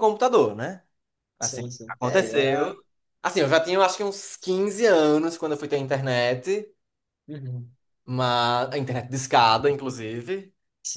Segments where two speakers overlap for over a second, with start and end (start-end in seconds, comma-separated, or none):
1.4-2.8